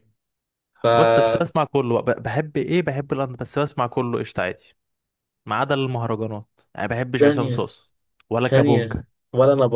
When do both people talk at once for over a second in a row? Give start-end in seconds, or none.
none